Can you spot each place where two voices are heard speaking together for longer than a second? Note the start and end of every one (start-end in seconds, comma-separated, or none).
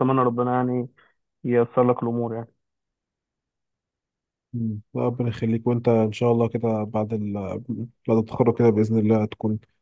none